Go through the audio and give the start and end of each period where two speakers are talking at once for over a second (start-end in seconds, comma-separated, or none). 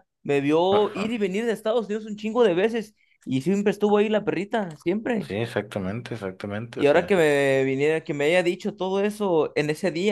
none